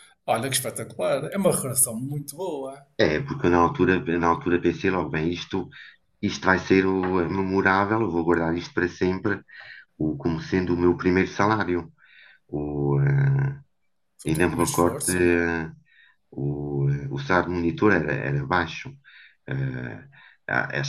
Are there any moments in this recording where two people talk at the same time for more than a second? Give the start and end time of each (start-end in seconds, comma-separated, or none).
14.3-15.5